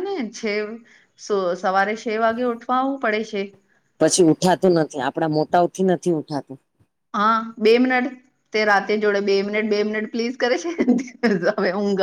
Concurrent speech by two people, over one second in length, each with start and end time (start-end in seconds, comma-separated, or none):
none